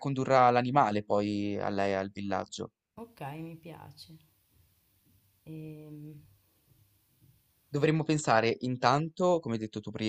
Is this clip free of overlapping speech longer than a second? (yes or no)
yes